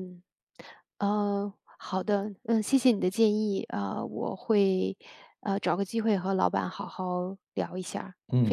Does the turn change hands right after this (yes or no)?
yes